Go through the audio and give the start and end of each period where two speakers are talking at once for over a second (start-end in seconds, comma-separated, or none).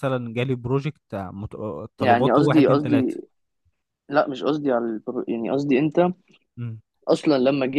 2.0-3.2